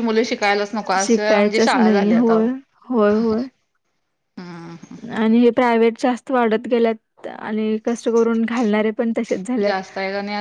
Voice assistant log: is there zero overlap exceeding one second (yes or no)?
no